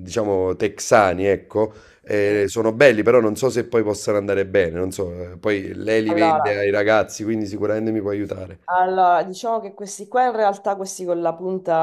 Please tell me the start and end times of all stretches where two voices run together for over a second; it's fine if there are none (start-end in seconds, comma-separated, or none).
none